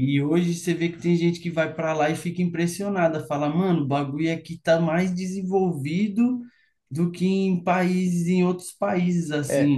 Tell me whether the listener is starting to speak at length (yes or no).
yes